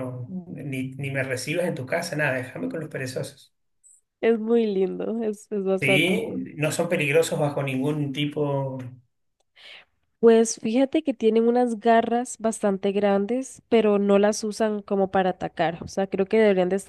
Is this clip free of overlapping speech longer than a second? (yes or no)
yes